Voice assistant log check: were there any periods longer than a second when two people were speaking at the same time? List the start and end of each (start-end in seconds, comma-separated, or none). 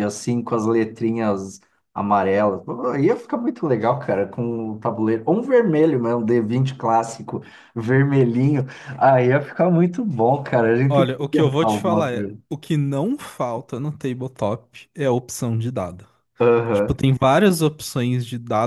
10.9-12.4